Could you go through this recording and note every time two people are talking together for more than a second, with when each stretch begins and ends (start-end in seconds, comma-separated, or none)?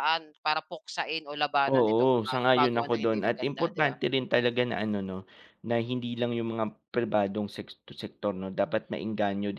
1.7-3.9